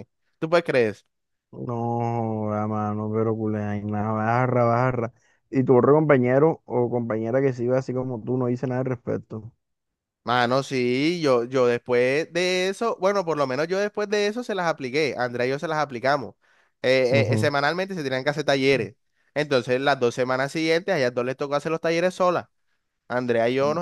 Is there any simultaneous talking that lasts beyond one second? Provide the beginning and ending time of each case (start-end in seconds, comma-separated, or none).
none